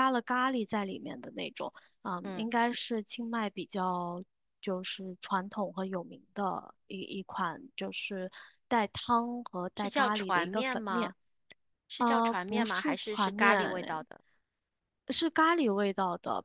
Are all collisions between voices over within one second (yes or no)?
no